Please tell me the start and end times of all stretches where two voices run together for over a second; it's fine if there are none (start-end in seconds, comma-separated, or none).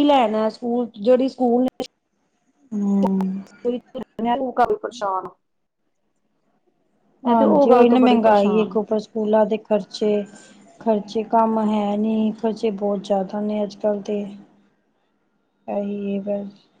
7.3-8.8